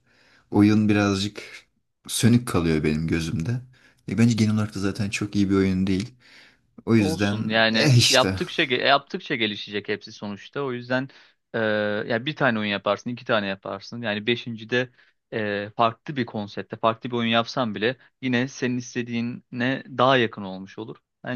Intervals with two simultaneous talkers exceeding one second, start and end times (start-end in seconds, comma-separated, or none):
7.0-8.4